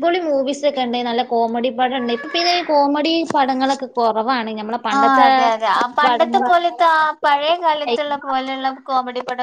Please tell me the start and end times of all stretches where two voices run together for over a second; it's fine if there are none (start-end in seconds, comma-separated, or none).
none